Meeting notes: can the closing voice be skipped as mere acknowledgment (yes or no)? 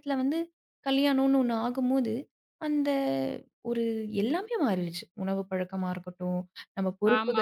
no